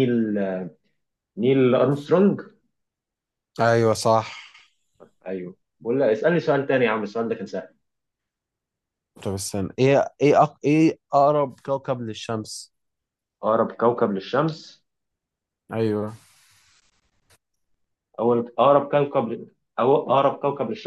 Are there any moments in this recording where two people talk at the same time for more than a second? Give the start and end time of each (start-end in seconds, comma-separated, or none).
none